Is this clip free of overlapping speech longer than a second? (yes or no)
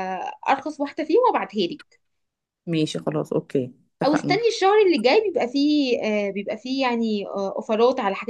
yes